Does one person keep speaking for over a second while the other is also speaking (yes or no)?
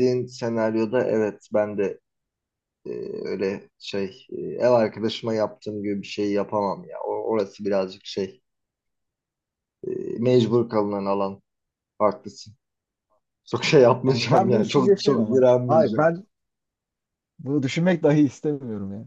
yes